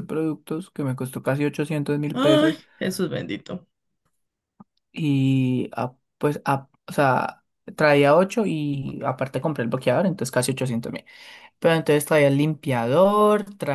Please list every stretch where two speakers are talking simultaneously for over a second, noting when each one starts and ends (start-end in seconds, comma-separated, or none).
none